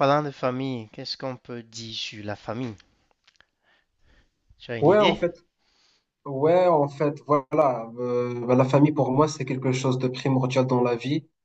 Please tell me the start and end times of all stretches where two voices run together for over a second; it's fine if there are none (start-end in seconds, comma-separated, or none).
none